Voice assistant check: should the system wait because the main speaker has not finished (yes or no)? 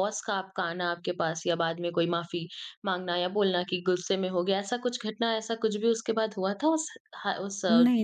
no